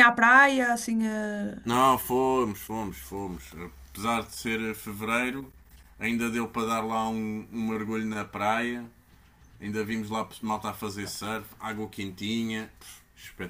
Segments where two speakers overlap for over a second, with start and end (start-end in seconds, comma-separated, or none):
none